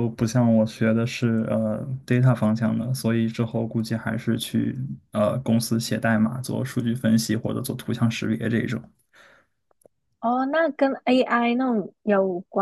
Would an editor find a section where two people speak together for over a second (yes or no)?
no